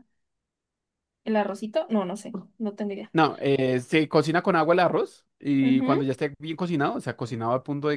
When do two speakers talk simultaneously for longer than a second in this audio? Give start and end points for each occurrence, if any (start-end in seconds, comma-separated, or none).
none